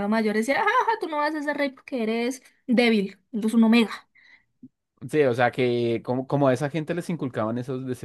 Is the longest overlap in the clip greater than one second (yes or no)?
no